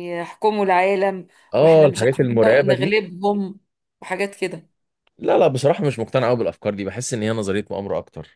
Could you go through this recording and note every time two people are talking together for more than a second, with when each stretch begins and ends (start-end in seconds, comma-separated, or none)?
1.5-2.9